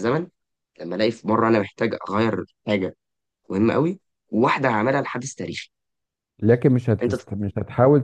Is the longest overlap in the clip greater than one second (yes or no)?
no